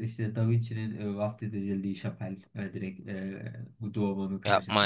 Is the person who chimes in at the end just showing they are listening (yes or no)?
no